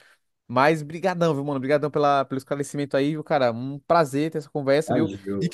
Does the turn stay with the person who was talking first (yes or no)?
yes